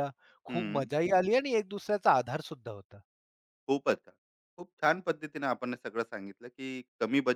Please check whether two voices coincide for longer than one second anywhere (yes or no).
no